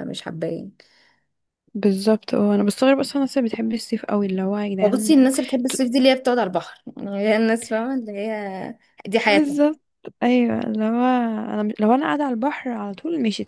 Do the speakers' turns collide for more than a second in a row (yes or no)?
no